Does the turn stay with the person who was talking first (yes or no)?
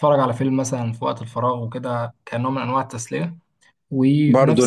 no